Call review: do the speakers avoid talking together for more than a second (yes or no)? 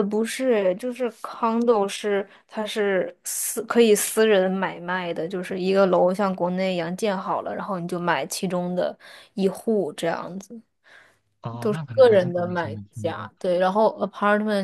no